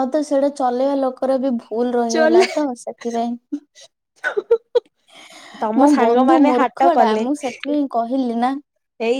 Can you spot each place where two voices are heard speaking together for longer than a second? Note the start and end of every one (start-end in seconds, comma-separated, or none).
5.8-7.6